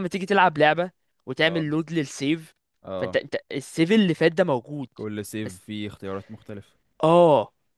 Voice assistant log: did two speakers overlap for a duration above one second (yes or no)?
no